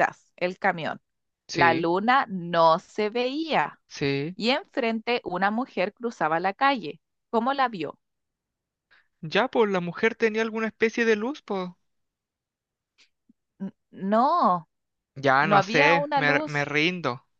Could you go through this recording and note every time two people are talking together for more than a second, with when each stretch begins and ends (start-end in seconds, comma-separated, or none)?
15.4-16.6